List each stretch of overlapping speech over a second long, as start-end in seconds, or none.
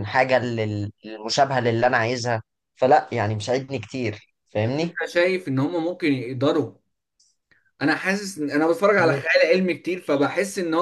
none